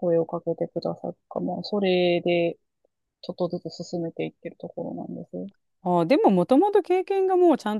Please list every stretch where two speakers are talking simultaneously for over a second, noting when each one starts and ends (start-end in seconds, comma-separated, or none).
none